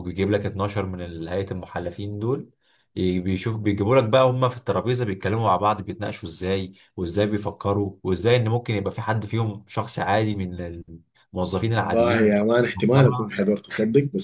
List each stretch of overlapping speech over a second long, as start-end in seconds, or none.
11.6-13.3